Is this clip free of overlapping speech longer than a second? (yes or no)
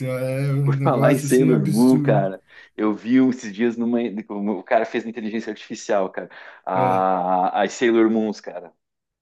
no